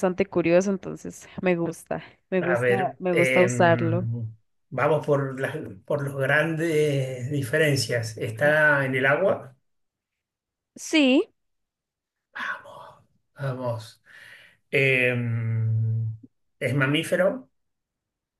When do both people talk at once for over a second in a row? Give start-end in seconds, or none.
2.4-4.1